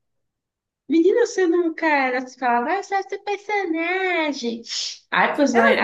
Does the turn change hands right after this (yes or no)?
yes